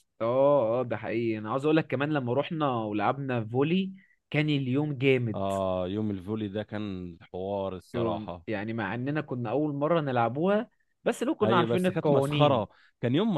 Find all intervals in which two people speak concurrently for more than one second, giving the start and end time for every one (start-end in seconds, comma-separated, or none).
11.4-12.7